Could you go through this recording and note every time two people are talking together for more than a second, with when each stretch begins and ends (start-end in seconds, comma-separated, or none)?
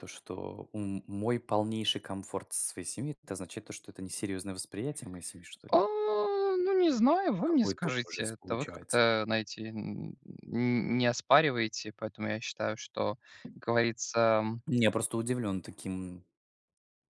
7.4-9.0